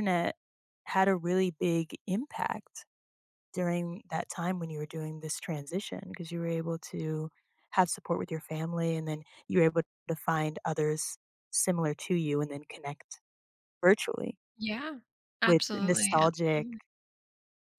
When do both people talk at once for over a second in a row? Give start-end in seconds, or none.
15.4-16.7